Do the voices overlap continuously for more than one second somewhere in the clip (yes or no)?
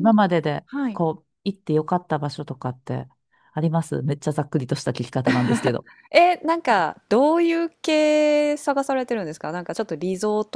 no